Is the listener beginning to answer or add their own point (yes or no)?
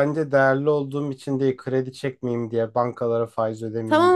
yes